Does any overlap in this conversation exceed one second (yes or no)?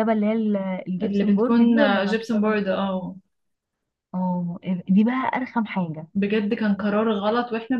yes